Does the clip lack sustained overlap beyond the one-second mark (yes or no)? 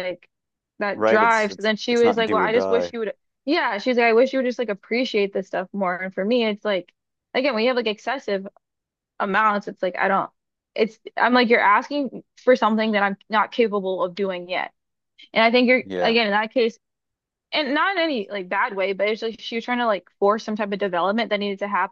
no